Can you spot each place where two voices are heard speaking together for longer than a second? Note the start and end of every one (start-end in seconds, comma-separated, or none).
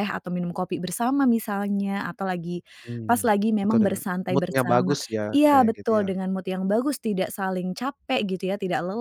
3.0-6.2